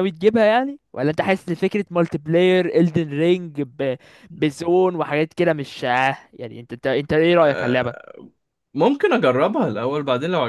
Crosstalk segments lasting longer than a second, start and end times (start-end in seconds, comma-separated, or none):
none